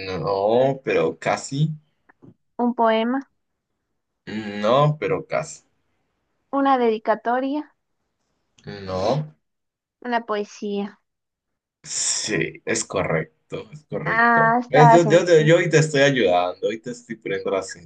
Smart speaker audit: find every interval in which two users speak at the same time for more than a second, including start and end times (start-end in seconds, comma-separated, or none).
14.0-15.5